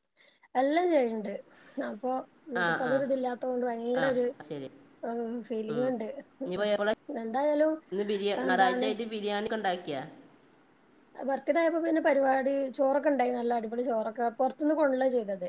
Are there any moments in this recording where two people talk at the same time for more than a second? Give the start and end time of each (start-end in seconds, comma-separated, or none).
none